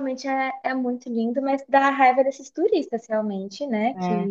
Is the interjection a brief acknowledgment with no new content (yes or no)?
yes